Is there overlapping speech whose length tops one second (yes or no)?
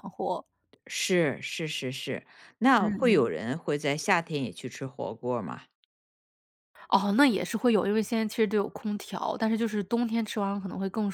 no